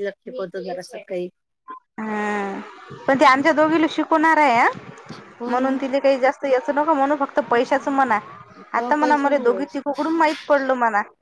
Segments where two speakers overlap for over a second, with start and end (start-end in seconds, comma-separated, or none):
none